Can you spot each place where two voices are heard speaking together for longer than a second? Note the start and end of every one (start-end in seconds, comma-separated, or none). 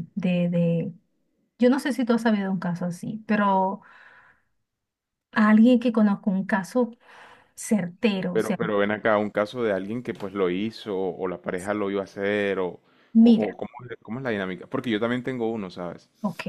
none